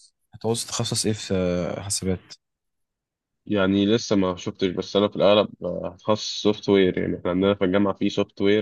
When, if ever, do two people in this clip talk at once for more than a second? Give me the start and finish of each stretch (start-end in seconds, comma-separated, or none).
none